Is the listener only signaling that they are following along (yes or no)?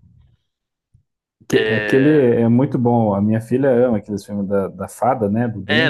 no